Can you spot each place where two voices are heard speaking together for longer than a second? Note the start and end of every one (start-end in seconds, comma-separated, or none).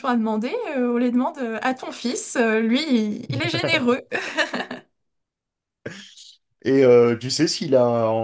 none